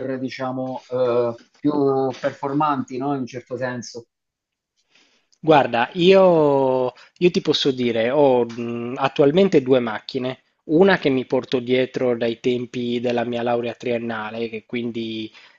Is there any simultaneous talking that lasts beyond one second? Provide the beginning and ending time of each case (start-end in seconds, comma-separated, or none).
none